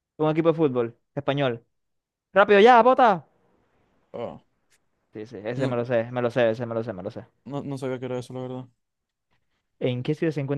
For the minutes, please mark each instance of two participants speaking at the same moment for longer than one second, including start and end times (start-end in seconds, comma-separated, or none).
none